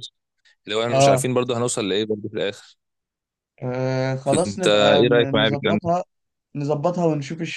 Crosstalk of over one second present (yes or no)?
yes